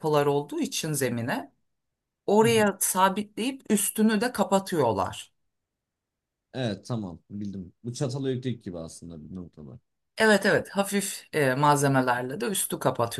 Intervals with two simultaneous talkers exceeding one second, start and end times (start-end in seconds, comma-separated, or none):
none